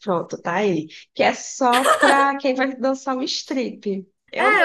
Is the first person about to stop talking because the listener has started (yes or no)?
yes